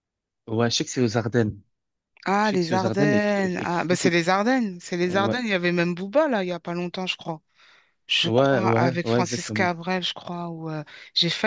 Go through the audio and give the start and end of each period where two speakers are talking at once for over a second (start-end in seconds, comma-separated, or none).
2.4-4.2, 8.2-9.7